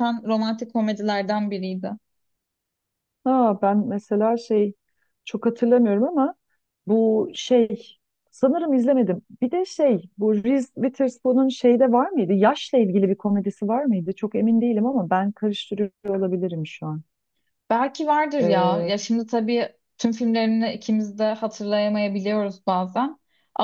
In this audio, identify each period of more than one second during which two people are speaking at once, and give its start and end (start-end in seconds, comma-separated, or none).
none